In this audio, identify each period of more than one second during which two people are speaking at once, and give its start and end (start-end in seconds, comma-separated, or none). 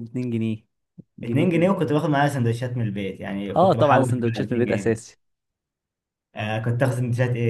3.5-5.0